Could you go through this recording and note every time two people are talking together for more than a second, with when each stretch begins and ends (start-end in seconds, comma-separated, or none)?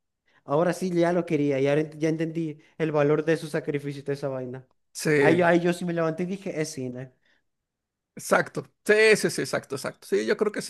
none